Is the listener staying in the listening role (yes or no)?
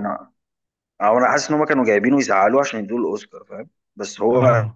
yes